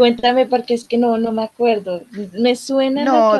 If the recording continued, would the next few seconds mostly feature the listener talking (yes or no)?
yes